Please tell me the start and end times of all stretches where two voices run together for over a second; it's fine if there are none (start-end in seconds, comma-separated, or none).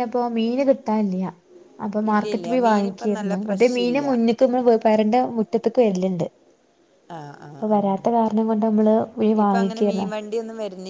2.1-4.0